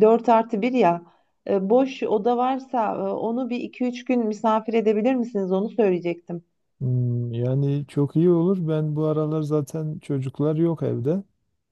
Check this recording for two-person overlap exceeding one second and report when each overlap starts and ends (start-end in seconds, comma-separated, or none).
none